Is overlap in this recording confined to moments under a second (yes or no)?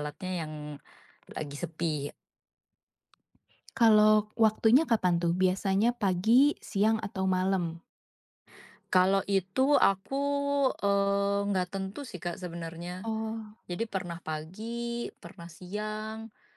yes